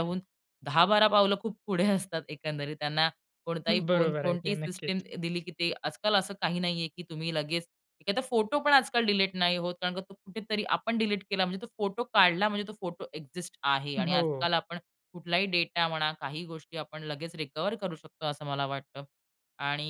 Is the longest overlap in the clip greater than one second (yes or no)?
yes